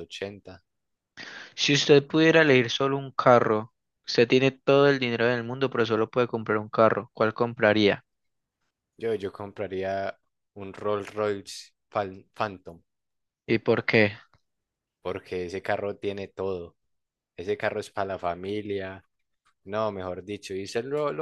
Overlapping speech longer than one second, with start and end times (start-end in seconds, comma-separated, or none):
none